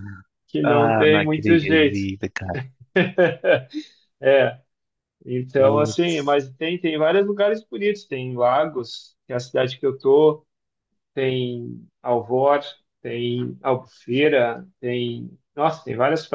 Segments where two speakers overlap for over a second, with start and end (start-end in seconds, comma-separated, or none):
0.6-2.1